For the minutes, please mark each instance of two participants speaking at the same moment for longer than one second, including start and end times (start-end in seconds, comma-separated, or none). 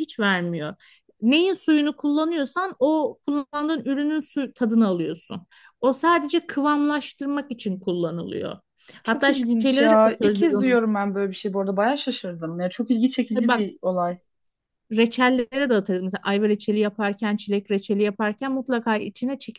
9.0-10.8